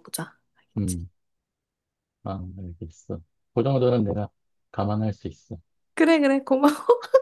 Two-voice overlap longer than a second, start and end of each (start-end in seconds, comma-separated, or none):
none